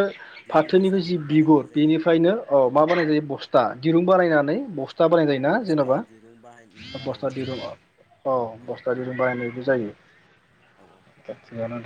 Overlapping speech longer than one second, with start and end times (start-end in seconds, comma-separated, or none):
0.5-1.9